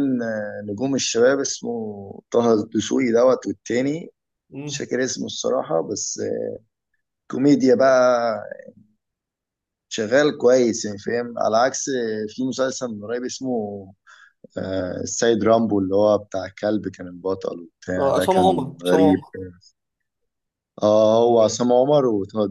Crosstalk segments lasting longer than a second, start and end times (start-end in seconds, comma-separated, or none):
18.0-19.2